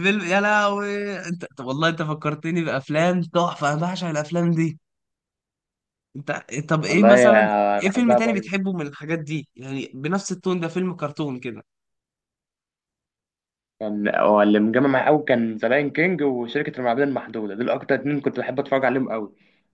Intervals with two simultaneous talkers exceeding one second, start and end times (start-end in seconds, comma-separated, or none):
6.9-8.7